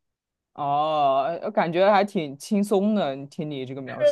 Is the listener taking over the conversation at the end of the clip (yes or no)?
yes